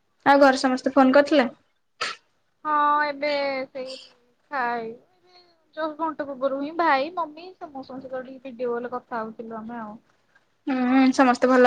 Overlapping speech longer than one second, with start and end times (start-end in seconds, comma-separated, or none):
none